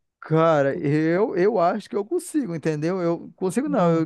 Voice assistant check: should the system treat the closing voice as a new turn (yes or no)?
no